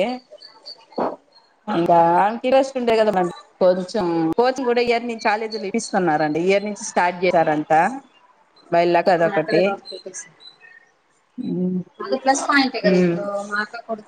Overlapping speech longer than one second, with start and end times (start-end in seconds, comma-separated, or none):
none